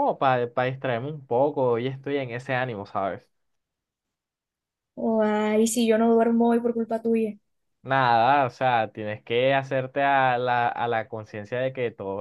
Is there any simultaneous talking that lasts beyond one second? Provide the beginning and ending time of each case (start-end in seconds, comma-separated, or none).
none